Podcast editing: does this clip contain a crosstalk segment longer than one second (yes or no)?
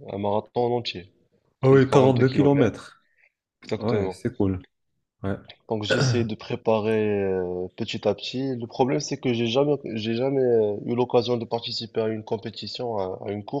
yes